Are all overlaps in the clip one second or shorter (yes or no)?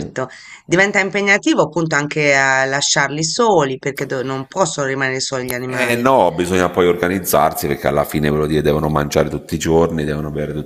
yes